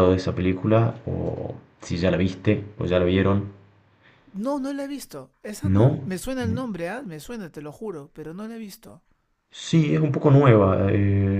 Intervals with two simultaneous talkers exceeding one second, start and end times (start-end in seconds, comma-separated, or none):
none